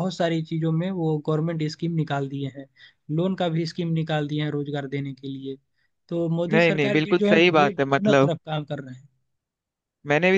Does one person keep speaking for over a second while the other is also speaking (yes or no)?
yes